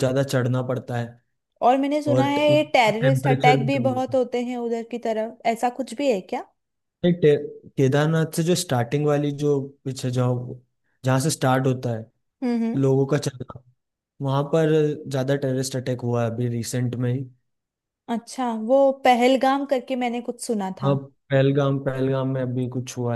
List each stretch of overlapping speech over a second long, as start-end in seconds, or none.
2.1-4.2